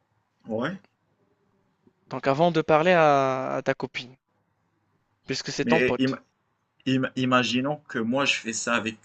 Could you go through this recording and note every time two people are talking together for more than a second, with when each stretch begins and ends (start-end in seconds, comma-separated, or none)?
none